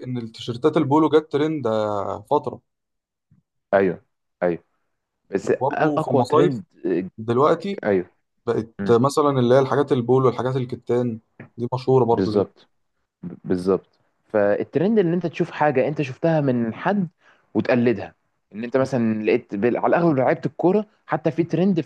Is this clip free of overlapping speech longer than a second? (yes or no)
no